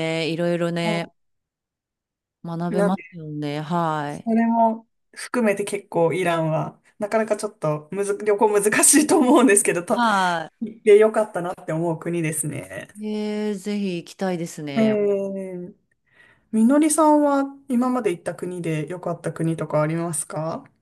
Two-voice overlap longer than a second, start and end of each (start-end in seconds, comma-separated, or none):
none